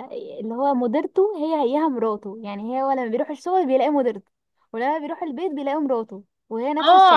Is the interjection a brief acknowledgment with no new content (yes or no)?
no